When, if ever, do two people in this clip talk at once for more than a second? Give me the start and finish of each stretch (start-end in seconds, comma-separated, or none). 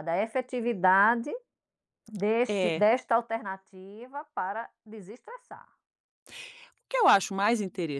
none